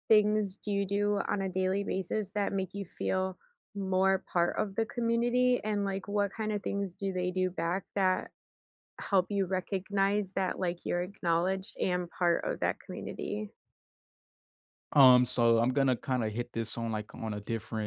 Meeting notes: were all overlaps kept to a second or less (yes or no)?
yes